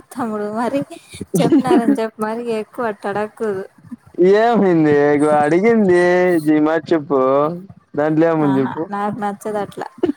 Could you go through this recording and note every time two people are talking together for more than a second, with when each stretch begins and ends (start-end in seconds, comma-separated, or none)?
none